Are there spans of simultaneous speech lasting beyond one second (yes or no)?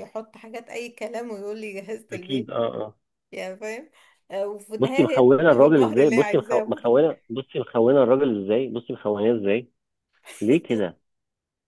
yes